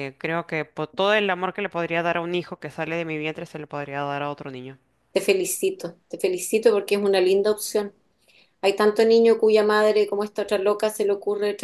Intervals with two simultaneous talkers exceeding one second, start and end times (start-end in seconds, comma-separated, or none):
none